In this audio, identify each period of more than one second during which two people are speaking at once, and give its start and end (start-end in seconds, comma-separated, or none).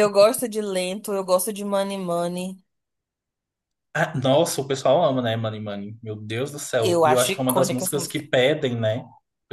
6.8-8.2